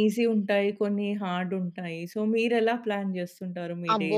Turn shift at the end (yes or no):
yes